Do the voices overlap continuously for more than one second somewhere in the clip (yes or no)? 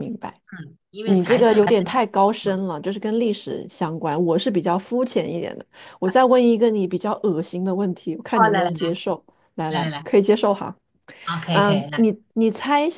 yes